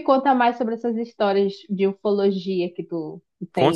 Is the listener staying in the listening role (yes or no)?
no